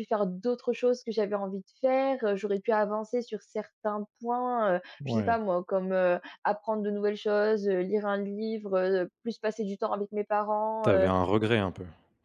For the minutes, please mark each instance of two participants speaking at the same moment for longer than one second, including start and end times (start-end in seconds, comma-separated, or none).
none